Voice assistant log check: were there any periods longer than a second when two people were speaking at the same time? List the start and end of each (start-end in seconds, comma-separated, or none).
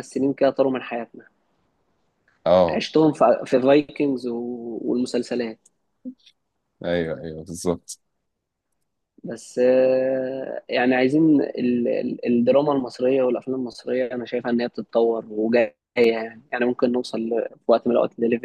none